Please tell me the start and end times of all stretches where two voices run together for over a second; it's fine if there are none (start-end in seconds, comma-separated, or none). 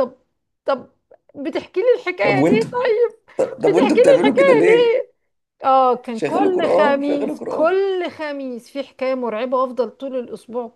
3.7-5.0, 6.2-7.7